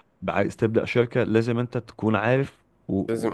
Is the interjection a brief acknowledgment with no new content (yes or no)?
yes